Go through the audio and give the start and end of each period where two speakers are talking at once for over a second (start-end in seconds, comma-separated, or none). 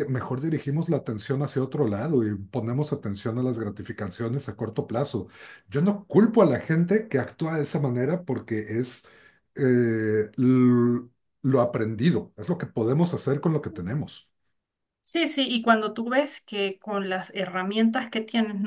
none